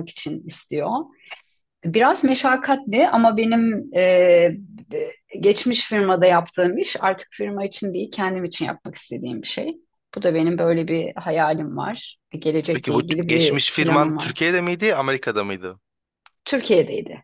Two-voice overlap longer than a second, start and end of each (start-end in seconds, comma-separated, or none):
12.7-14.3